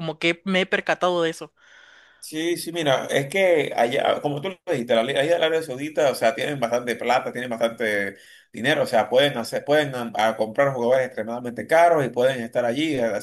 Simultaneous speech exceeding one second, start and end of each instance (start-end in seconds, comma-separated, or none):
none